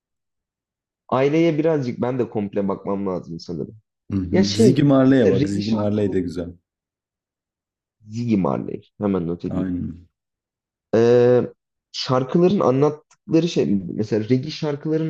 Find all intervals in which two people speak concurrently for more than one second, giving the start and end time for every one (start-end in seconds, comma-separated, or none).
4.3-6.3